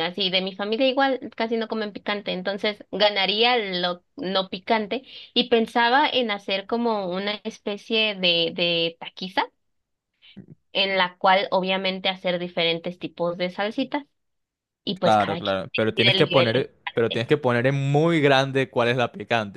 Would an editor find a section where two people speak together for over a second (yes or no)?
yes